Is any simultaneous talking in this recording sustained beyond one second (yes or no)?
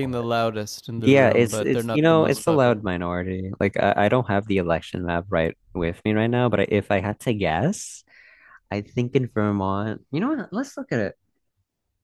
yes